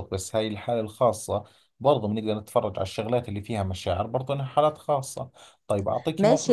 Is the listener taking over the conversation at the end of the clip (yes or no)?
yes